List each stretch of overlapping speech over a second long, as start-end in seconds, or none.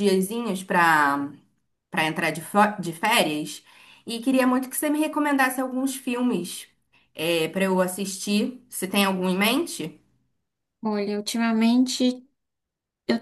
none